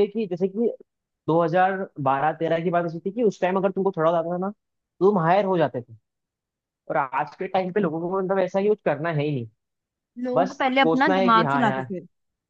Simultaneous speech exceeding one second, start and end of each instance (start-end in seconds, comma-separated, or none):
10.3-11.9